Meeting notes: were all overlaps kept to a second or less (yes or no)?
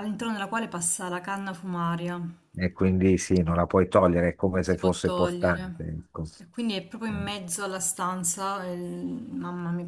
no